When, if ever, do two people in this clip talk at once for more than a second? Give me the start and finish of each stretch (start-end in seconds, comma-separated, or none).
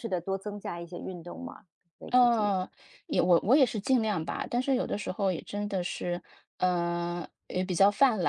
none